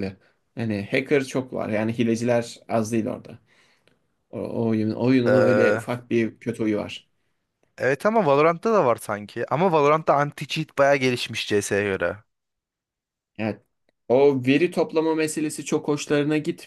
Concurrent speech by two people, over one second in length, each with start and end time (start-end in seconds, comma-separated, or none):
none